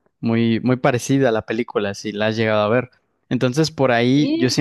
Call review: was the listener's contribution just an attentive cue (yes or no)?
yes